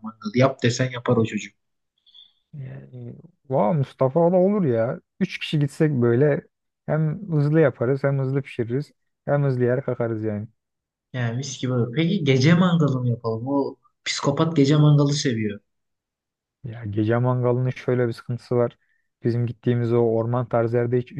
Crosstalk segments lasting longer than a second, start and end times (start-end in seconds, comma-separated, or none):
none